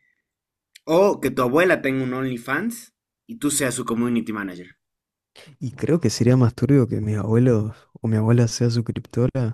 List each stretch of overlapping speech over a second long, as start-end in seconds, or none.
none